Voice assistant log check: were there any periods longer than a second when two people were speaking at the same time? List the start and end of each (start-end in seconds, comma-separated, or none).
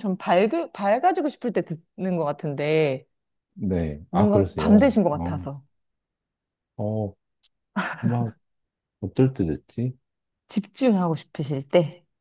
4.1-5.5